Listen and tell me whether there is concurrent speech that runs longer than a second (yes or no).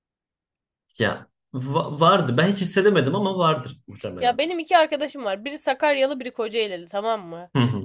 no